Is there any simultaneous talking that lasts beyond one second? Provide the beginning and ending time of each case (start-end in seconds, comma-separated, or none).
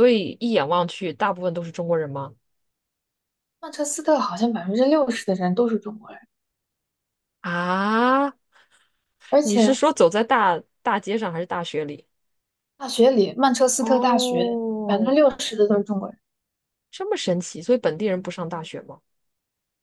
13.8-15.1